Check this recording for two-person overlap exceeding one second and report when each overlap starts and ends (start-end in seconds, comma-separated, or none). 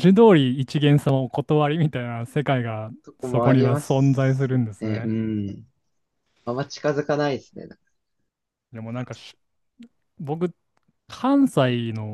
3.0-5.1